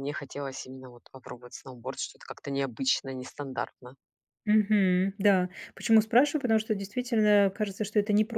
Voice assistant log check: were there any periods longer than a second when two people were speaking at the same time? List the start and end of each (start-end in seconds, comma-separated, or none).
none